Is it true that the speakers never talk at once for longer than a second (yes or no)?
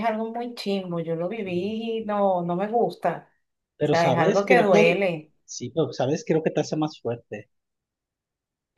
no